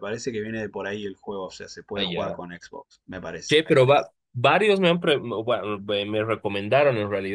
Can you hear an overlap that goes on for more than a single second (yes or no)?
no